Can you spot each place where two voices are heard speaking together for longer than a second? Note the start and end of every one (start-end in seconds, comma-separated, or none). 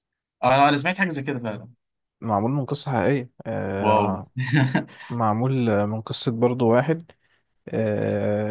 none